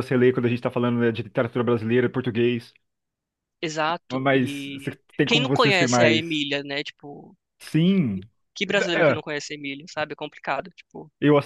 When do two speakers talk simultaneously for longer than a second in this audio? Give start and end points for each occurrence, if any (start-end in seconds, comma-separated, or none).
4.1-6.4